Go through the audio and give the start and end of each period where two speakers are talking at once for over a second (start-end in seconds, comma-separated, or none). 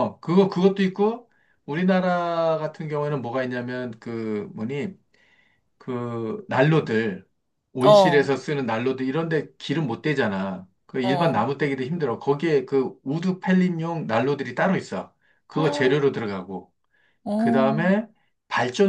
none